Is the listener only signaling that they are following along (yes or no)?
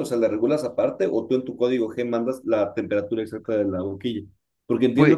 yes